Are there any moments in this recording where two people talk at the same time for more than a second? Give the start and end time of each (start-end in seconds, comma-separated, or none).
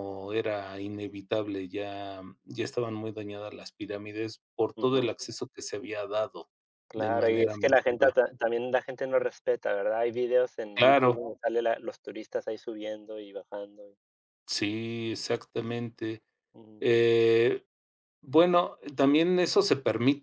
6.9-8.1